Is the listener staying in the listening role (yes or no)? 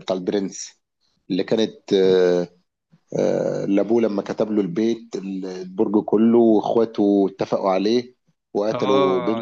no